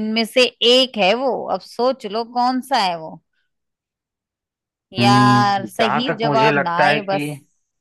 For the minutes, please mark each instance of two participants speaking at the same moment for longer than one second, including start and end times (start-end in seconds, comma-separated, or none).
5.0-7.2